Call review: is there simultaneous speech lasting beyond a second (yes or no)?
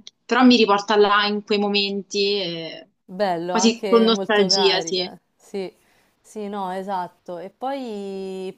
yes